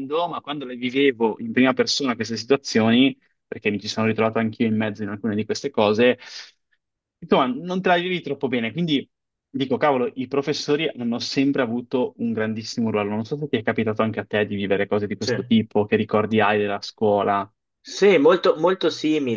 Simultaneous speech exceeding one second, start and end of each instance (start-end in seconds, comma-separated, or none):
none